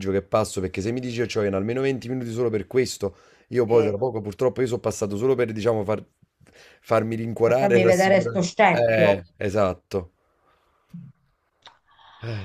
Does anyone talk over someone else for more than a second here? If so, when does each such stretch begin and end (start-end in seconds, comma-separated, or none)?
7.4-9.2